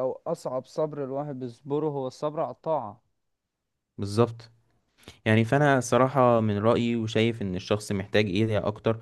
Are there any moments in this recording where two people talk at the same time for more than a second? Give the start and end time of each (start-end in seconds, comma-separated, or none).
none